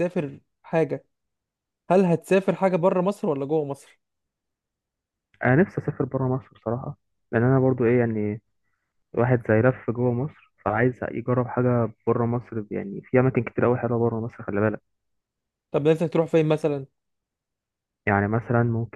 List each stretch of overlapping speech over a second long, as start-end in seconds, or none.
none